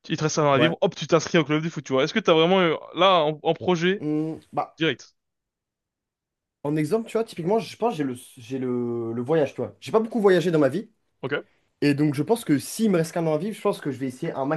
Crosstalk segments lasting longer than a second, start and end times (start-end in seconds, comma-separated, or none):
none